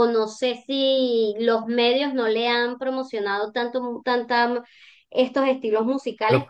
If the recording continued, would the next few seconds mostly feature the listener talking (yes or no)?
no